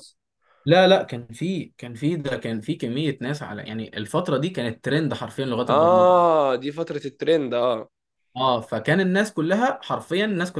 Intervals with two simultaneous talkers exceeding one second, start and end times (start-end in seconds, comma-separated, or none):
none